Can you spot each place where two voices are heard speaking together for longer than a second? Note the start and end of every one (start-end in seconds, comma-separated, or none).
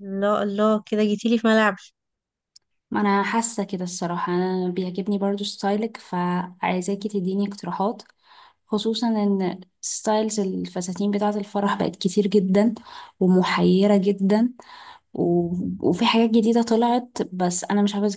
none